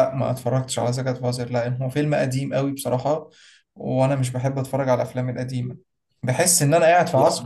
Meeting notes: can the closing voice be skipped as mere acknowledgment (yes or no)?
yes